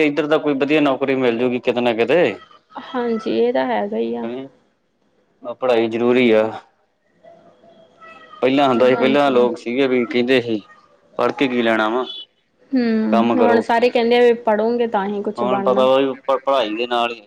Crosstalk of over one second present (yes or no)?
no